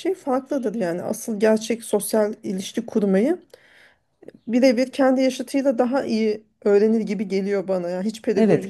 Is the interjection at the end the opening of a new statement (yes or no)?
no